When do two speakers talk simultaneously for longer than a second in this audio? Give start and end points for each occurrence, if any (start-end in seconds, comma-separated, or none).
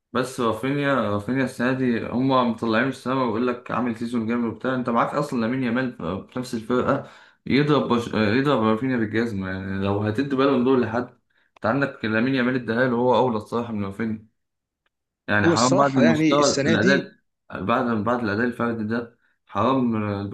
15.4-17.1